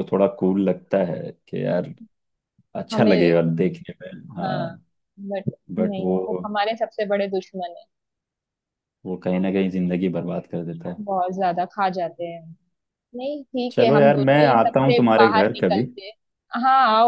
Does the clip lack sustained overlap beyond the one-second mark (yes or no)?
no